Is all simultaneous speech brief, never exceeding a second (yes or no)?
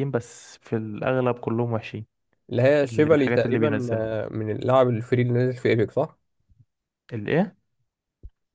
no